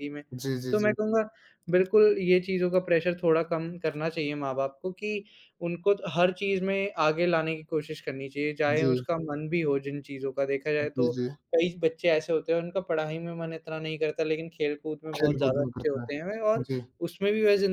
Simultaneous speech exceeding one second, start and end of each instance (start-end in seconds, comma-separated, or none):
15.2-16.7